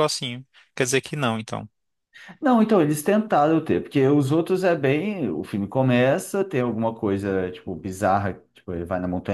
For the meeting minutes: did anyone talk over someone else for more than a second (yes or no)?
no